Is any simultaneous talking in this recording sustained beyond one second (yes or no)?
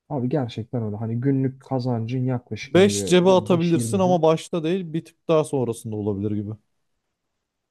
yes